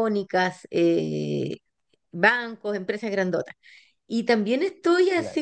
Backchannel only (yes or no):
yes